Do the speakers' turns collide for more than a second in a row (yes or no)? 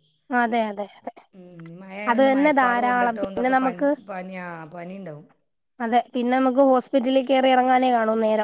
yes